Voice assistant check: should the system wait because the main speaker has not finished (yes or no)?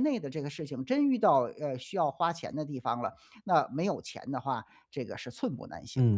no